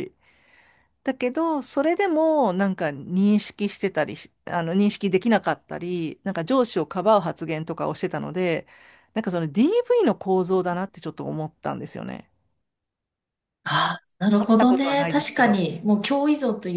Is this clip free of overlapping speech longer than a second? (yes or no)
no